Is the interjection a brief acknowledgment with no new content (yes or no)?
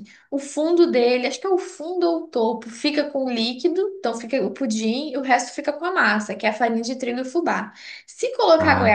yes